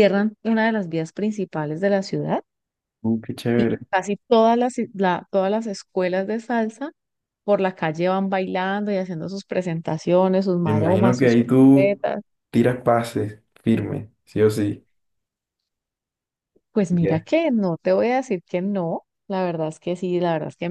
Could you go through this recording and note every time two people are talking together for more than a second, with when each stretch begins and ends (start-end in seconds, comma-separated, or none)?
10.6-12.1